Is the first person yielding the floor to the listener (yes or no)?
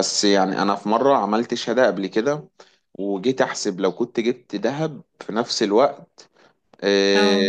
no